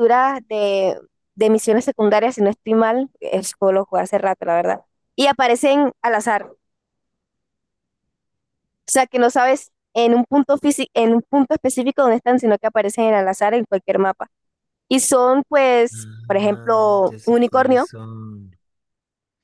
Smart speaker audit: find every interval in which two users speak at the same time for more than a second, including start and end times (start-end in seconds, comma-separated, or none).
15.9-17.9